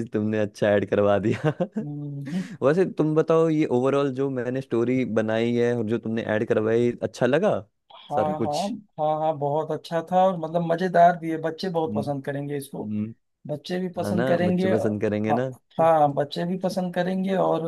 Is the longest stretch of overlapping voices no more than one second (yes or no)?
no